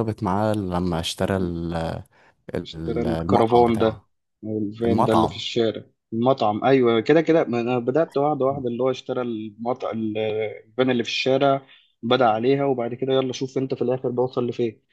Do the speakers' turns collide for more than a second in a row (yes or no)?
yes